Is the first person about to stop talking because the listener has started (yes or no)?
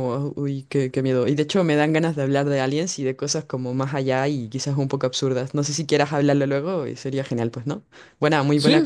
yes